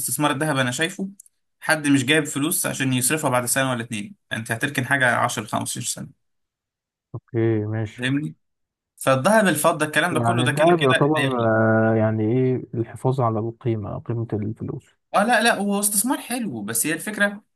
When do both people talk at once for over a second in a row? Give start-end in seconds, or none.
10.1-11.4